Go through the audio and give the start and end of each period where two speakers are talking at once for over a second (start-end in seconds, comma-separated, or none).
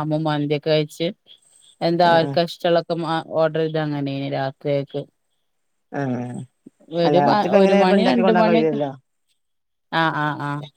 7.1-8.8